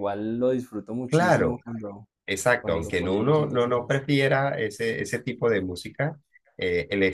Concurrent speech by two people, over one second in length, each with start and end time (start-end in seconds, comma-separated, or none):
2.6-4.0